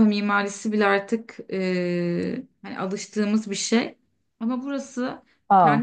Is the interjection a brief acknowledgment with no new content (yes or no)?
yes